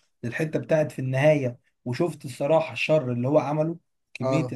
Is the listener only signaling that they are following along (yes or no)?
no